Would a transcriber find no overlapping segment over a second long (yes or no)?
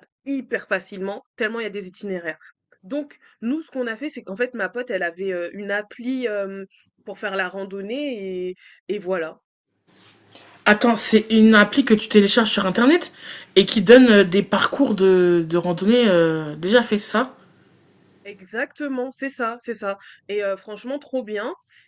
yes